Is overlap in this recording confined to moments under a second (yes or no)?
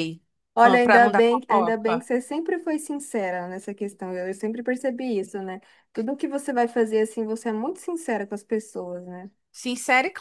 no